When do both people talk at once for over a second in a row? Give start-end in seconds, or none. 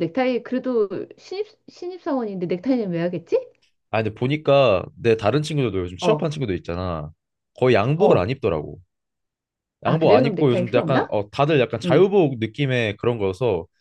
9.8-11.2